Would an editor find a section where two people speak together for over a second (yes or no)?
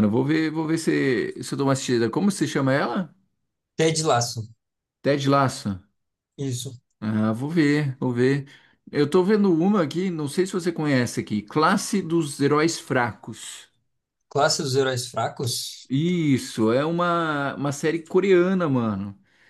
no